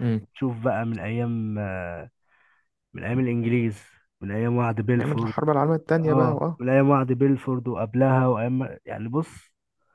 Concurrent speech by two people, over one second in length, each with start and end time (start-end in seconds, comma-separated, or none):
none